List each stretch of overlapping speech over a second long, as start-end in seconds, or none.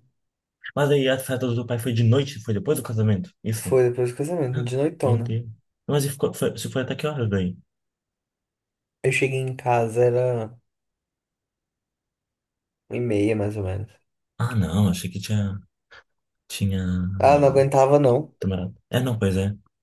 none